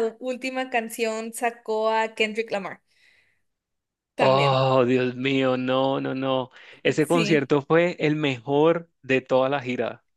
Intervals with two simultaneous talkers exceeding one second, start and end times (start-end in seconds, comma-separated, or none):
none